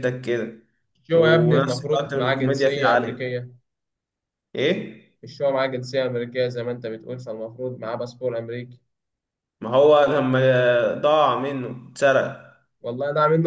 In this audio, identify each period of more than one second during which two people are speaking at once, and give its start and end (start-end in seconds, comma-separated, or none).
1.1-3.4